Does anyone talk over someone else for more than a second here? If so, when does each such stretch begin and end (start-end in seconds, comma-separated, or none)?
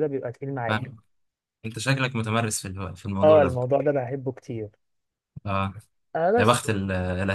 none